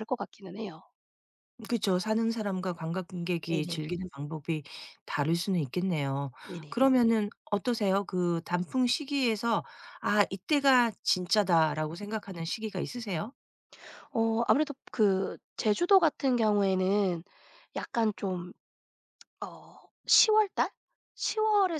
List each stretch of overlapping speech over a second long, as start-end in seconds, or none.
none